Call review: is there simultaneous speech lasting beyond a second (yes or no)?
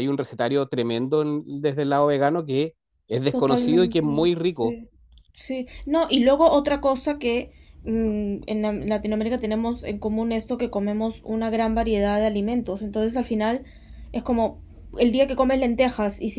yes